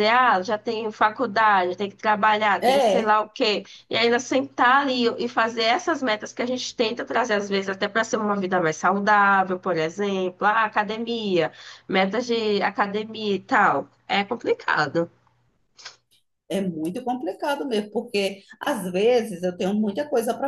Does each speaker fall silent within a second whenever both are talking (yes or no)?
yes